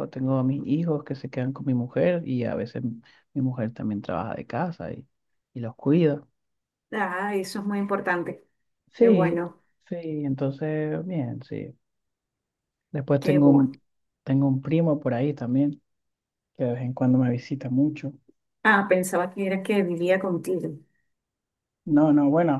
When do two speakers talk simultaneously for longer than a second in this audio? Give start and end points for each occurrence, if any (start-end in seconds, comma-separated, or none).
none